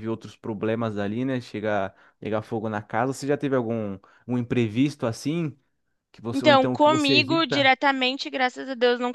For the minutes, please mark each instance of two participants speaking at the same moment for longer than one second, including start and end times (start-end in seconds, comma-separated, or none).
6.3-7.7